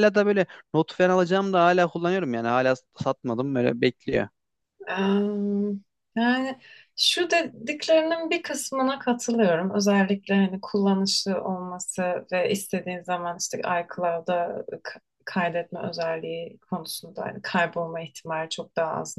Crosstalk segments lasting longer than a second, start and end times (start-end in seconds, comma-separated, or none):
none